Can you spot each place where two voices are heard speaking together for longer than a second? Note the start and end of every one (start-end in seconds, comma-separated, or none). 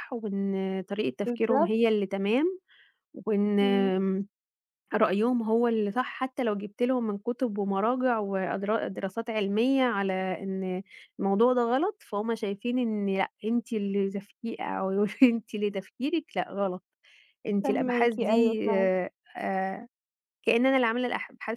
17.6-18.9